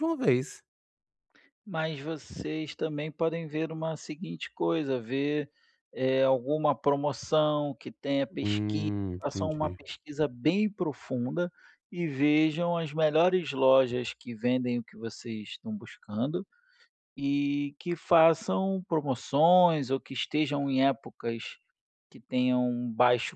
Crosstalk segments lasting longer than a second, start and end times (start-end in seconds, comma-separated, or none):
8.4-9.8